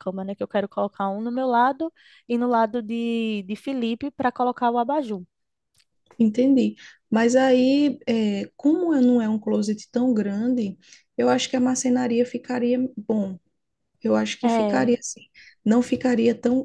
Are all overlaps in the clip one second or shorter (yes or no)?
yes